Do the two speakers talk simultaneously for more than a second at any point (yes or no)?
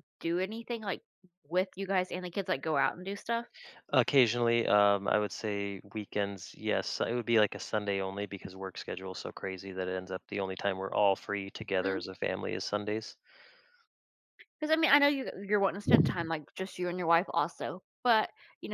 no